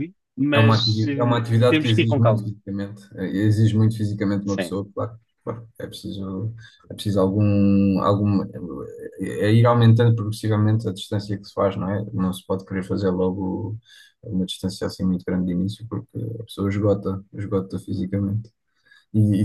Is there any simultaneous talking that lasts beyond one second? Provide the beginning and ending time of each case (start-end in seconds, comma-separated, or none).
0.5-2.5